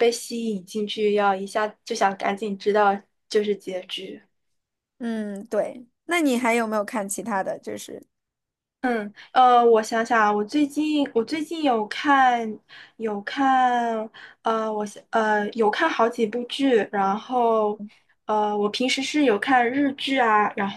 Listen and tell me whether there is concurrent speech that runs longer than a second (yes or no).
no